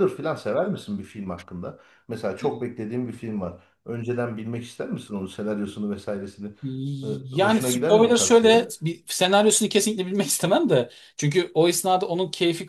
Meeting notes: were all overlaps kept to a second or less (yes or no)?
no